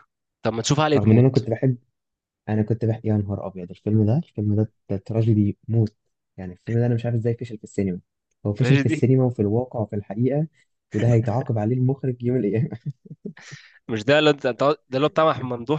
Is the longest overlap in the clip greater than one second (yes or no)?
no